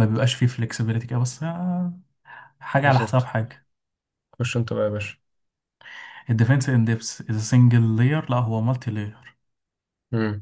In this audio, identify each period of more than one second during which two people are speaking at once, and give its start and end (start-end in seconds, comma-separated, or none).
none